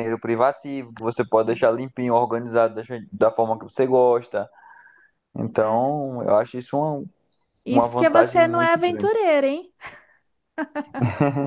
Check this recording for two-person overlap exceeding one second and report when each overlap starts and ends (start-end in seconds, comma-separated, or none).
7.7-9.1